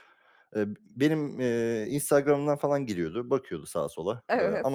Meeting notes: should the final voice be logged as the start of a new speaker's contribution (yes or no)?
no